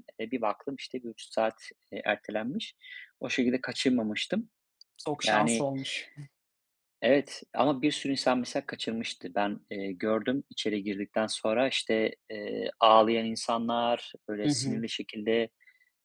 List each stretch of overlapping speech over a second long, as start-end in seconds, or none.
none